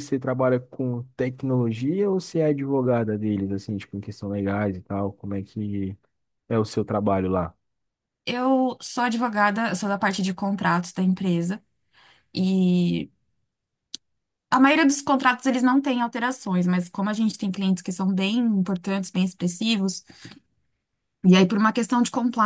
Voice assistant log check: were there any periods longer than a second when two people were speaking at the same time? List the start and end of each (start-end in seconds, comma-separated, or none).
none